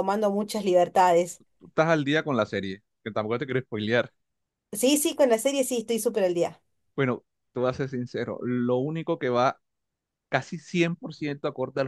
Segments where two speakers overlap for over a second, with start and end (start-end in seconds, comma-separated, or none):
none